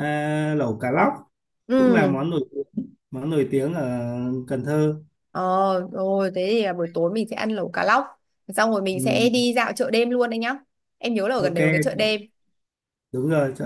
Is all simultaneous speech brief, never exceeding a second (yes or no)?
yes